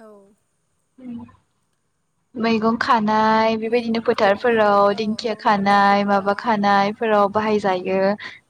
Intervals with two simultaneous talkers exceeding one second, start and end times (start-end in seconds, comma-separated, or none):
3.7-6.6